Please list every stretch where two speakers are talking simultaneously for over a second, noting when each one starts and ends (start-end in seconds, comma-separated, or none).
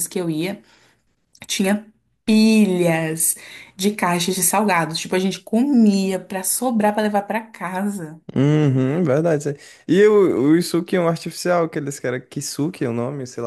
none